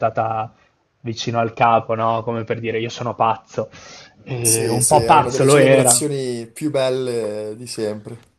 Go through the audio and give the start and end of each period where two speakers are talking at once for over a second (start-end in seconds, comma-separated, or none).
4.4-6.0